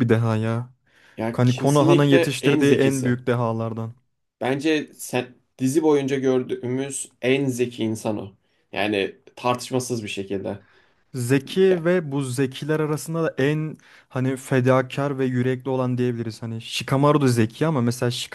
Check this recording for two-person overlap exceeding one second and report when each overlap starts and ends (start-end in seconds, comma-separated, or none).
1.3-3.1